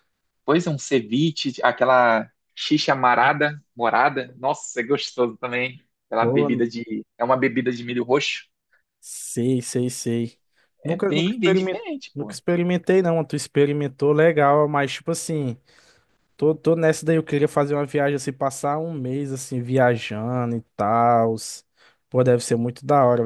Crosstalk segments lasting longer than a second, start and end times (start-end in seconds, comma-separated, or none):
10.8-12.3